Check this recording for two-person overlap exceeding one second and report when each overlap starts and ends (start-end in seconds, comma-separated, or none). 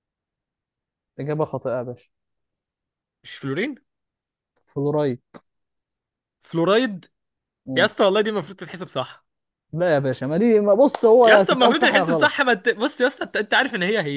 11.2-12.5